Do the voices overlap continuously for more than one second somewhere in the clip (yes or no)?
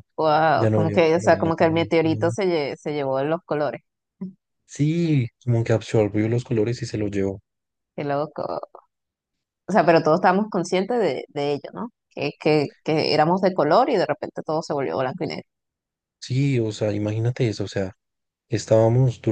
yes